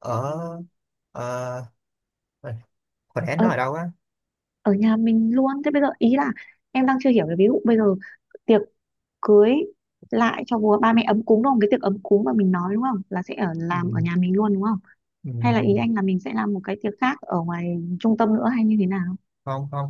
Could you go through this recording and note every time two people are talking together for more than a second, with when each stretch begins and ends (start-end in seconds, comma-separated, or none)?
none